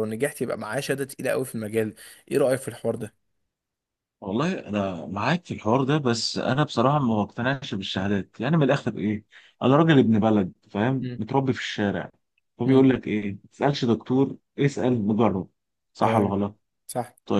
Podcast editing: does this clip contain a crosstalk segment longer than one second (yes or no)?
no